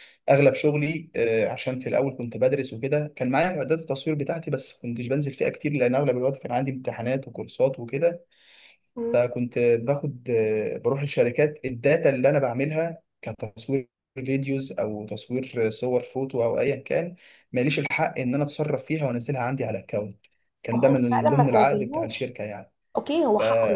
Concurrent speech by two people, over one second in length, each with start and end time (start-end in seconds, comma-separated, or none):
20.7-22.3